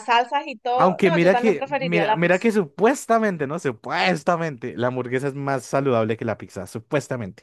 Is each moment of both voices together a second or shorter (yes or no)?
no